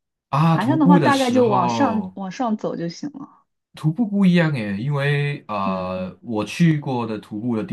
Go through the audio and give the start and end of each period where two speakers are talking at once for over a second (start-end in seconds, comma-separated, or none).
0.5-2.2